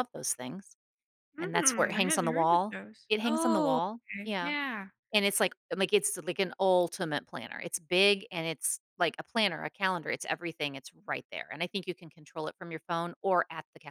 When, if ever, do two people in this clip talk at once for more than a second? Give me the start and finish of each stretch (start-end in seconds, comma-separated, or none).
1.4-4.5